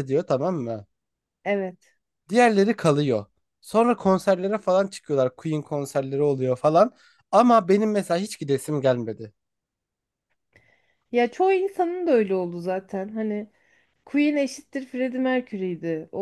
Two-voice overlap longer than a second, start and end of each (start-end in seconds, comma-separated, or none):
none